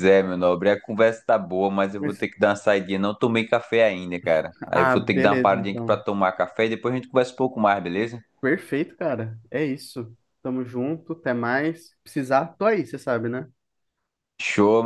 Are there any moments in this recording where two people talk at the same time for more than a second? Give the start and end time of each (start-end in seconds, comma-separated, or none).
4.7-6.0